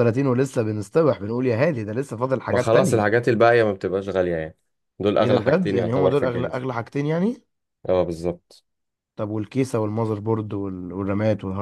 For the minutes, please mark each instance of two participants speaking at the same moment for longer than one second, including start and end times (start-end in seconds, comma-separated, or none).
5.2-6.6